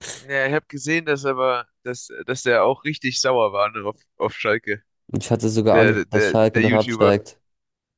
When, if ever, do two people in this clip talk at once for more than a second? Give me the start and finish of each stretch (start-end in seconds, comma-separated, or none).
5.7-7.2